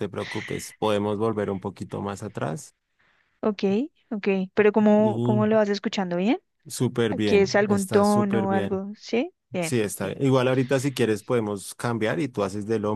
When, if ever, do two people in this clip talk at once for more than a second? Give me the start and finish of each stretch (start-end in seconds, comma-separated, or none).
7.1-8.8